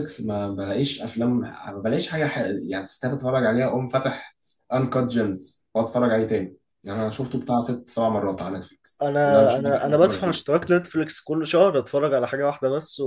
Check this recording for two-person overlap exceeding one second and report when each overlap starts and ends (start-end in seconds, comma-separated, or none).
9.0-10.4